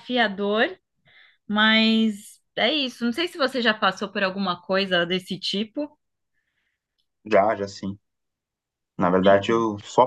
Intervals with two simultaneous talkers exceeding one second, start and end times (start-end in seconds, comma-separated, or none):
none